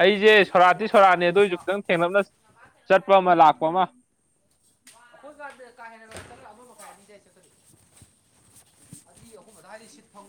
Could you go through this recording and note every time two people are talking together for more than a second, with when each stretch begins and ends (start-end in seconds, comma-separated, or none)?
none